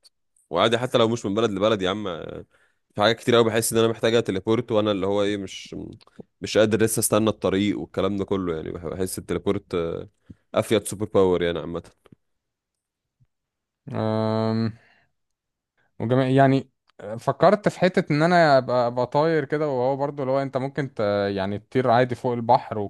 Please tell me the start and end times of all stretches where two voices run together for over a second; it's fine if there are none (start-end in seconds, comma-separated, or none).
none